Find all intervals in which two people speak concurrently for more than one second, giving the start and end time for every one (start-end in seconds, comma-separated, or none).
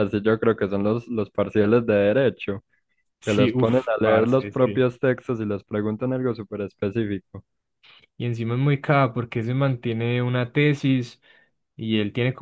3.2-4.9